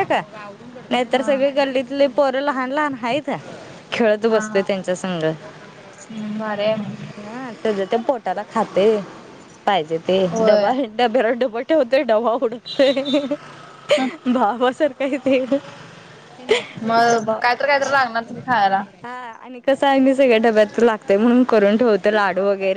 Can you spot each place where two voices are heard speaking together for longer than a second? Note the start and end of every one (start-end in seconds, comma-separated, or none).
none